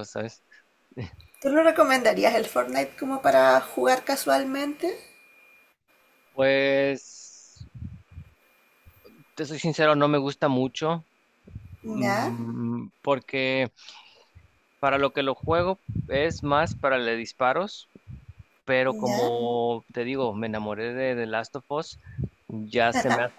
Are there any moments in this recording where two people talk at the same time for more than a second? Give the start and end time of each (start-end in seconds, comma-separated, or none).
none